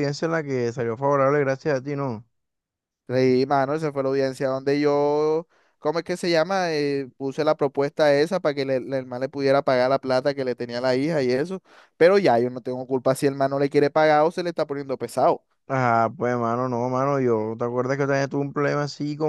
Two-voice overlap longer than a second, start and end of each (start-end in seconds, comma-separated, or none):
none